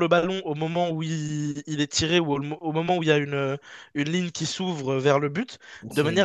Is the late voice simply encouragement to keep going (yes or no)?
yes